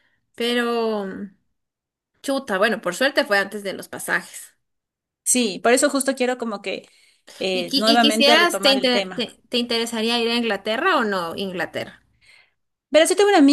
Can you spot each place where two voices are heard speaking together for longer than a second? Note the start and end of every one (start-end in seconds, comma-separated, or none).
7.5-9.3